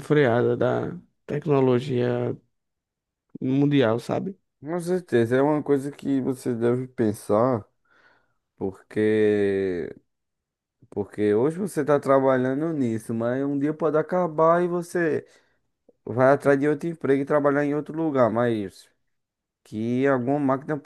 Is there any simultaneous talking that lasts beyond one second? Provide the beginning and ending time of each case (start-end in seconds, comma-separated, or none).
none